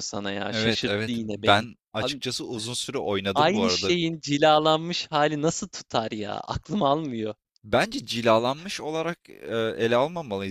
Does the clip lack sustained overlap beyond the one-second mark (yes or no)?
no